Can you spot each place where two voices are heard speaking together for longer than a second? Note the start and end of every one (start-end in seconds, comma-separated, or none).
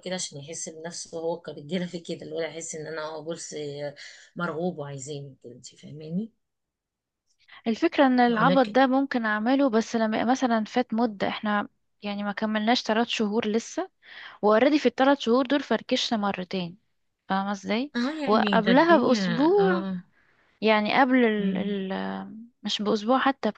18.0-19.9